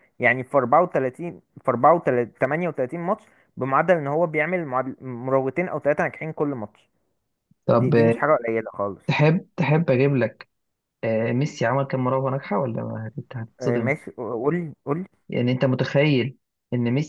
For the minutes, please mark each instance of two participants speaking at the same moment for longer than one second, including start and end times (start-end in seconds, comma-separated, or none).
none